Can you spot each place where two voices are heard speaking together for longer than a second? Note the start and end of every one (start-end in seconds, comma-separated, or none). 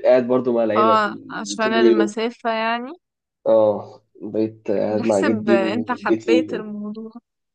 0.8-2.1, 4.9-6.5